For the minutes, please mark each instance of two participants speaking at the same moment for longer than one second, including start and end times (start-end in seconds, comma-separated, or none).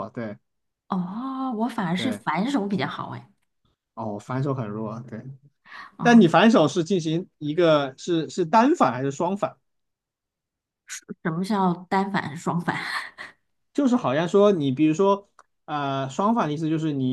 none